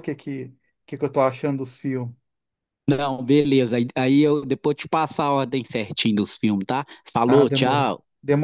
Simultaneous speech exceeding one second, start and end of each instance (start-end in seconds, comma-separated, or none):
none